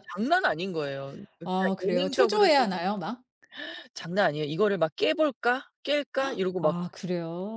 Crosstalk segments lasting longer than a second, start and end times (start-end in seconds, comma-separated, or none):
1.4-2.9